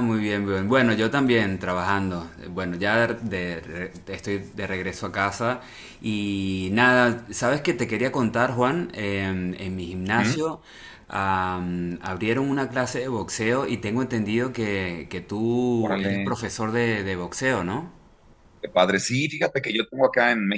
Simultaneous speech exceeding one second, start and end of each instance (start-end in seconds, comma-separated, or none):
none